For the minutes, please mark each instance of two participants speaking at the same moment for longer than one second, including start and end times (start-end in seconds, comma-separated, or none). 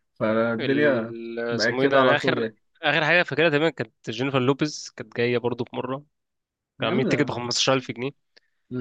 0.6-2.5